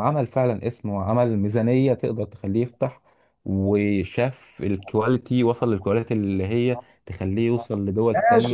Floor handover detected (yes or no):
yes